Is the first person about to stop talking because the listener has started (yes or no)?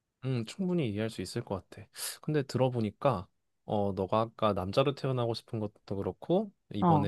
no